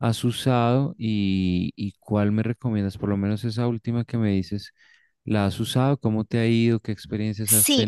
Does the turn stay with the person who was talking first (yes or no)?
no